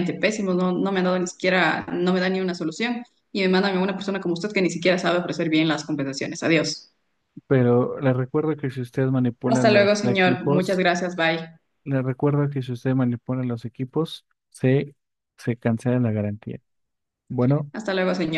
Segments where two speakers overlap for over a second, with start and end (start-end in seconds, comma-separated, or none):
9.4-10.8